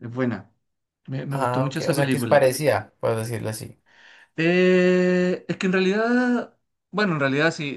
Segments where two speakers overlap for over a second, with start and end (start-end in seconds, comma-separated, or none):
1.3-2.5